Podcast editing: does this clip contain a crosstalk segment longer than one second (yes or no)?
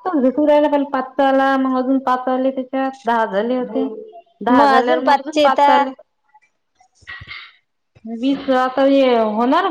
yes